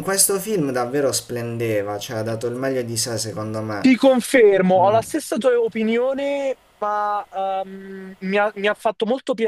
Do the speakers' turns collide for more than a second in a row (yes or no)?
no